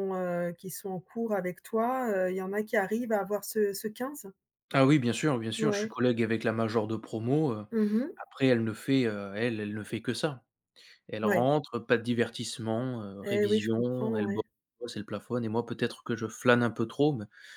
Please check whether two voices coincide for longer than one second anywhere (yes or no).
yes